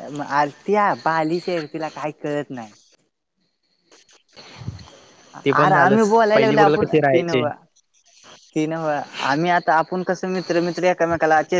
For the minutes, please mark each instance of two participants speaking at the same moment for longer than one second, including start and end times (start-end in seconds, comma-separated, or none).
5.6-7.4